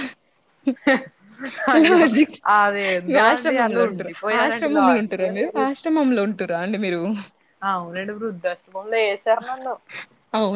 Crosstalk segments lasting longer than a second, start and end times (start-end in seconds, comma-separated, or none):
3.1-5.6